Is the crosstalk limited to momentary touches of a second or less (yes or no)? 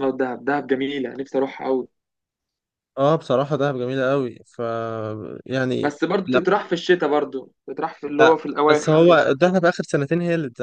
yes